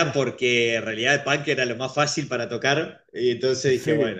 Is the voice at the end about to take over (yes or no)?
no